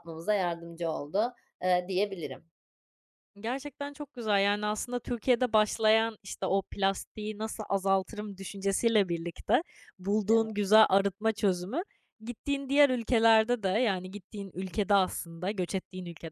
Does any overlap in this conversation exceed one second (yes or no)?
no